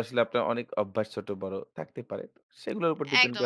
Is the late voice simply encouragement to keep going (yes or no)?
no